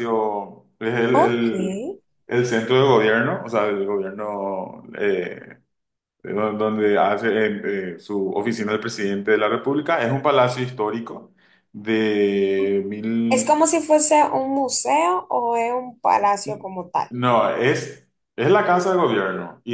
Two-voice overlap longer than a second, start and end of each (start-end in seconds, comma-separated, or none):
none